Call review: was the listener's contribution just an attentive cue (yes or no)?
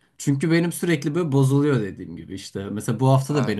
yes